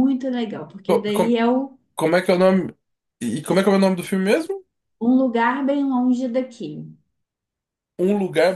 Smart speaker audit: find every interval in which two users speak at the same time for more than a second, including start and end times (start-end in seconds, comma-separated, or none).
none